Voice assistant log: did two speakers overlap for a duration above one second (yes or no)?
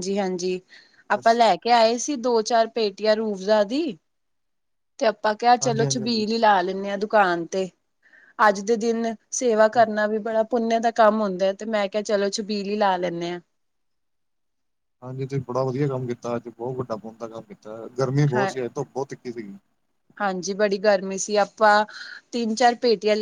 no